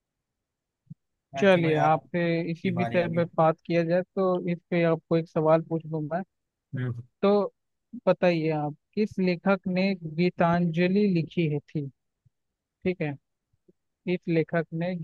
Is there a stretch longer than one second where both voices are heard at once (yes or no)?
yes